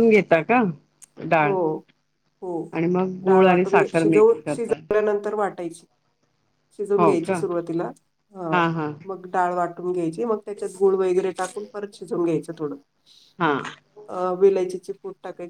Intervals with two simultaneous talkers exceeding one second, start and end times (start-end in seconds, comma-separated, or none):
3.3-4.8